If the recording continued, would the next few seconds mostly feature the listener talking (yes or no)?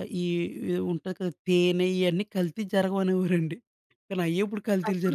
yes